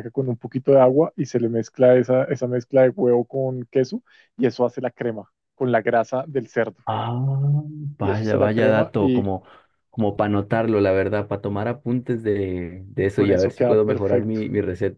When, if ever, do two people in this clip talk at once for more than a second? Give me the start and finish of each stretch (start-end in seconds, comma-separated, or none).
8.0-9.3, 13.1-14.4